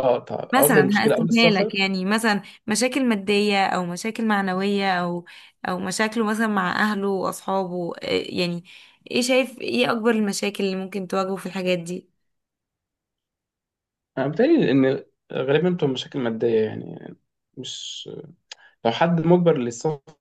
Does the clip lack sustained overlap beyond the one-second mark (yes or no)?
no